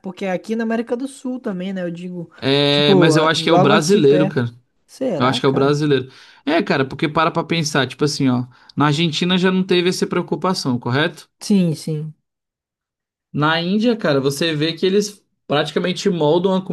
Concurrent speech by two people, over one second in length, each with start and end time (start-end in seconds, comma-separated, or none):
2.7-4.4